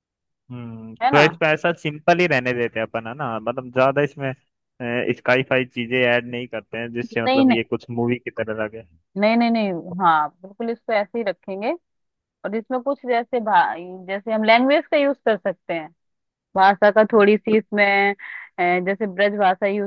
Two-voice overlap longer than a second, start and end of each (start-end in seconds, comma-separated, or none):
none